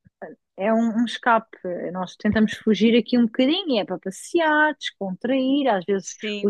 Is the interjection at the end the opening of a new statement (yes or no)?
no